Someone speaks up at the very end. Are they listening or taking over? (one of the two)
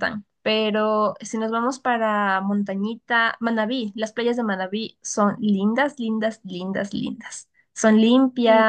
taking over